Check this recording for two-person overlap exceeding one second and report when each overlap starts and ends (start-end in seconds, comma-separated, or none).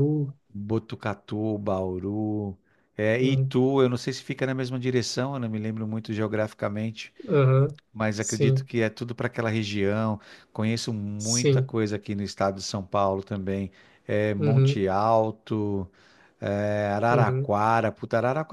none